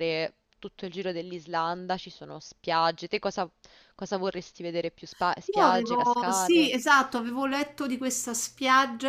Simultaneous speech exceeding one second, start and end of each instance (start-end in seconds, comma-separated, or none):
5.5-6.7